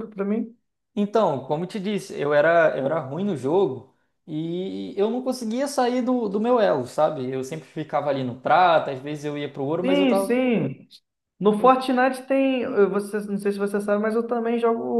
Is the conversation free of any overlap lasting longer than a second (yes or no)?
yes